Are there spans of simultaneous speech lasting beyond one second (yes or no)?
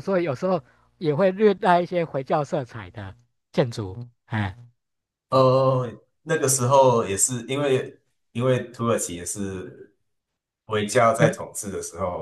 no